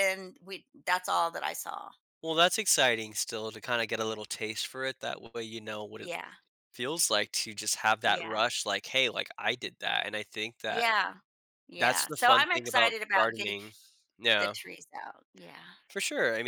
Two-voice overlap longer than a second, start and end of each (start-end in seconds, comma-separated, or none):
11.8-13.5